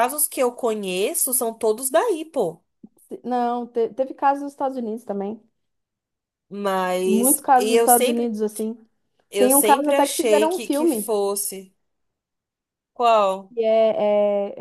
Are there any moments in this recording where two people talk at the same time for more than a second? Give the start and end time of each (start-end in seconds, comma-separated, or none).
7.0-8.3, 9.4-11.1